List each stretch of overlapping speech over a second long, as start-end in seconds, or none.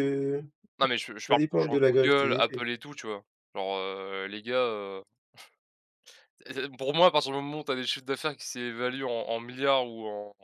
1.3-2.6